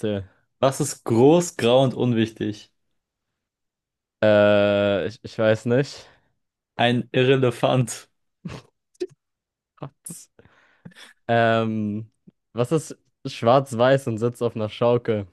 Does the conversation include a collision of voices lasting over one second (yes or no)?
no